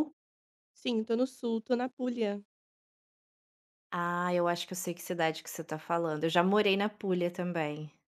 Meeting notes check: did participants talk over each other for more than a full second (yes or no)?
no